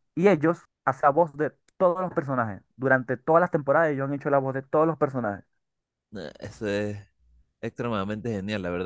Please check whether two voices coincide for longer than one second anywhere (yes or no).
no